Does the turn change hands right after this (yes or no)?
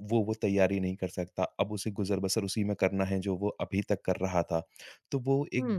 no